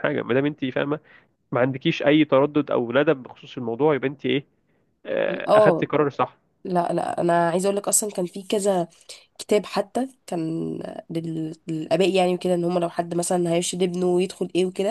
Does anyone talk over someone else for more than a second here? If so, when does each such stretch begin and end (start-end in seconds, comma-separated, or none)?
none